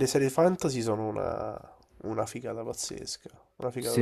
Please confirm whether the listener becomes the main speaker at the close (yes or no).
no